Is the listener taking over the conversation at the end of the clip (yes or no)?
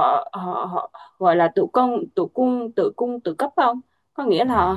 no